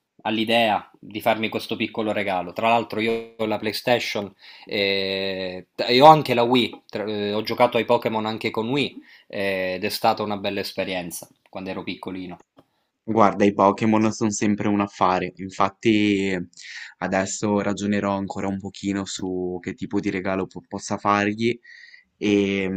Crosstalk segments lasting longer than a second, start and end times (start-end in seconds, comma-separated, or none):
none